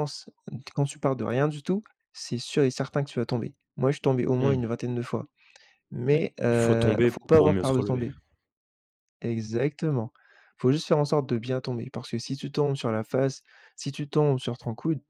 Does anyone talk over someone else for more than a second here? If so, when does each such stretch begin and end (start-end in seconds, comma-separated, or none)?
6.1-8.1